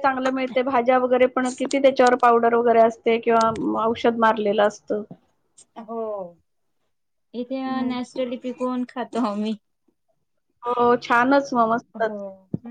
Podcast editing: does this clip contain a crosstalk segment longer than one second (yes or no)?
yes